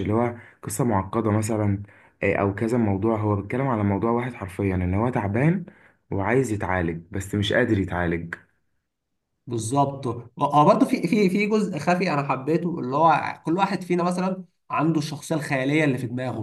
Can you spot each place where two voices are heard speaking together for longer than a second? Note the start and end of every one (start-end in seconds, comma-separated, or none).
none